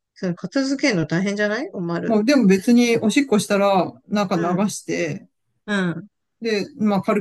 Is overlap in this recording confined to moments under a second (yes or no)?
yes